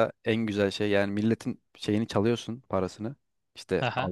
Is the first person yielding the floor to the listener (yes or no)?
no